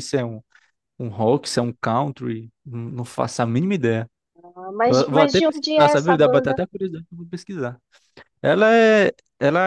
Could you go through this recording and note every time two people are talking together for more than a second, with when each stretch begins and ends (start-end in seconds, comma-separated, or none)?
4.8-6.6